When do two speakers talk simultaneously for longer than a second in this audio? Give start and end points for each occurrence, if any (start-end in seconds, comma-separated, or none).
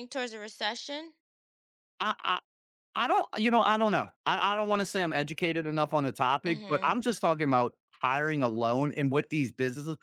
none